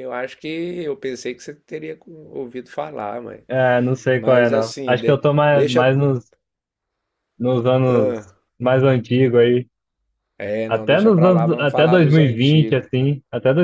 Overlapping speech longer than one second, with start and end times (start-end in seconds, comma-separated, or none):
4.2-5.9, 10.7-12.9